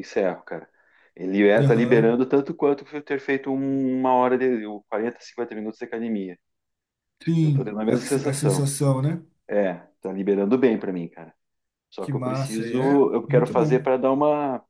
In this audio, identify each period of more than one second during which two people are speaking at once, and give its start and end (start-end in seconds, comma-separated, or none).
7.4-8.7, 12.0-13.8